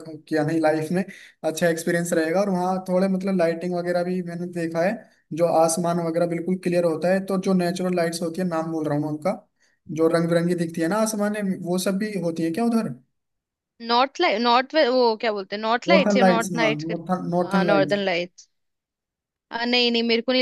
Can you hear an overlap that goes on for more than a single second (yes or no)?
yes